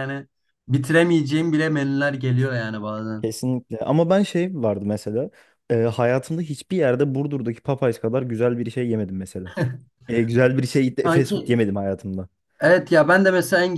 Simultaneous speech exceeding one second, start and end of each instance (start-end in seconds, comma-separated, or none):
none